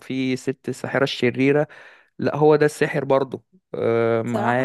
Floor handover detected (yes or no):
yes